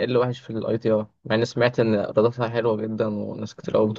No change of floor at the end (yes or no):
no